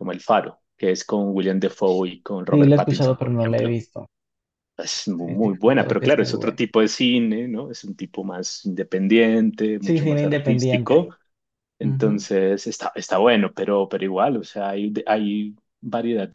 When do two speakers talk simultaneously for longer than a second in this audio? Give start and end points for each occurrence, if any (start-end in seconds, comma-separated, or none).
2.5-3.8, 5.2-6.7, 9.8-11.1